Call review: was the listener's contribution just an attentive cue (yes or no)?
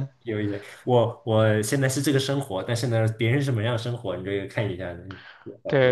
no